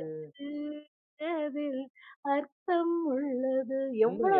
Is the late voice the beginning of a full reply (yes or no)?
yes